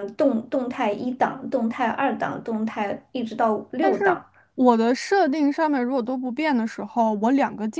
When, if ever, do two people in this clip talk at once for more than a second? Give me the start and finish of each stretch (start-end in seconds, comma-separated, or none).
none